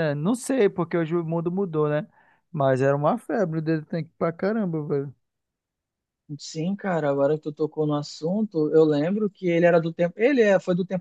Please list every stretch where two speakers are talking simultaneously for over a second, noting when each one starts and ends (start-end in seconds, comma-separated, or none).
none